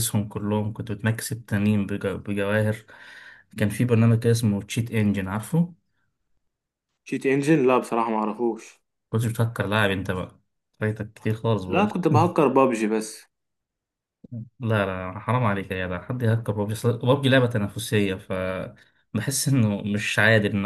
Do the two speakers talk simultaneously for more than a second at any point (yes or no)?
no